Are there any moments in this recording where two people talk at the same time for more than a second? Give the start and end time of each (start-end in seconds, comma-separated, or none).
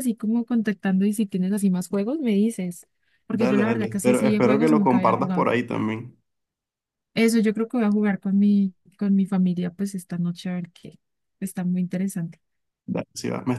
3.3-5.5